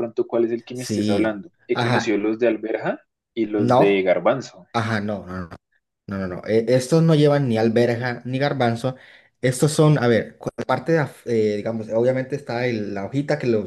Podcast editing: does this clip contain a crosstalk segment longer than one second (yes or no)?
yes